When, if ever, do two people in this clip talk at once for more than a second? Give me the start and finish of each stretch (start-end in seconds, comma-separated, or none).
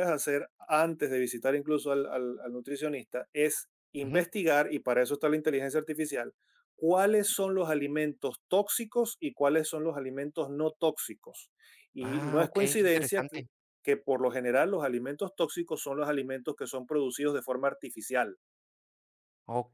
12.0-13.4